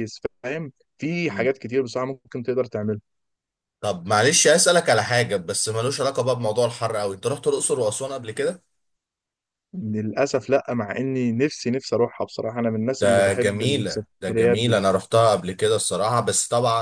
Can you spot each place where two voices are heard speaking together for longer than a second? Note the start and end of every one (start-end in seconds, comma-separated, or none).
13.0-14.8